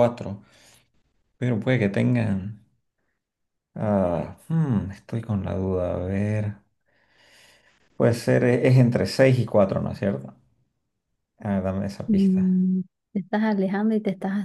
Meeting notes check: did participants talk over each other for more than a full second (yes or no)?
no